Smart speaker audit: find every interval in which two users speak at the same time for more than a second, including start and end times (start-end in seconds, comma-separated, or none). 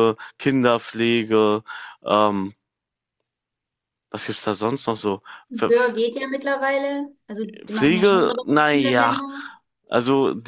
7.7-9.2